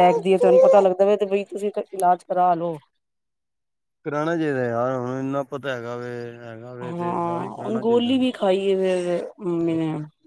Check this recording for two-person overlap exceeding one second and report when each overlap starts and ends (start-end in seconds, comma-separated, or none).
6.8-8.1